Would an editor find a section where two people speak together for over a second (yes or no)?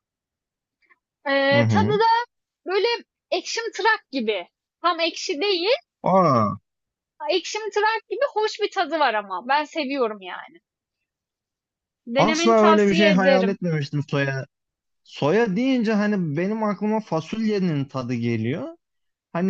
yes